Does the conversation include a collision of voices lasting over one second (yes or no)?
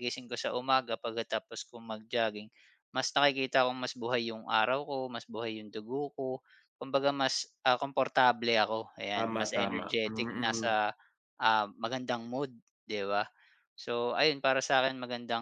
yes